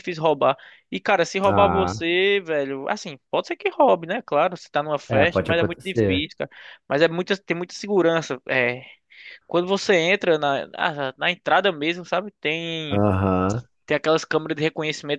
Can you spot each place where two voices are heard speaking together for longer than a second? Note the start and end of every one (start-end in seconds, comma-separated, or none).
5.1-6.3